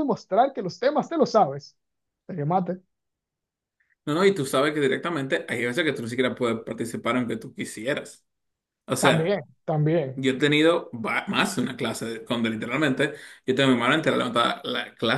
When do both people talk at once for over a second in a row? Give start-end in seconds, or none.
none